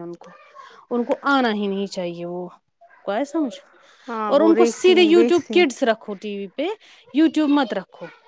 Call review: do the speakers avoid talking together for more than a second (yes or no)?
no